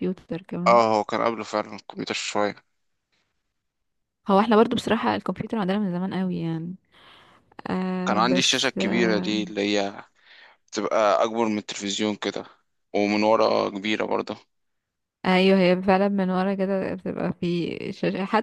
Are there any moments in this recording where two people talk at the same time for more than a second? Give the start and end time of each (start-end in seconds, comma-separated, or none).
8.1-9.4